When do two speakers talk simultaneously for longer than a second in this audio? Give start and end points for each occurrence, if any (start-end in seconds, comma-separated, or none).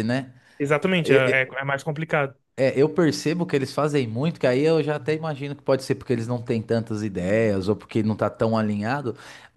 none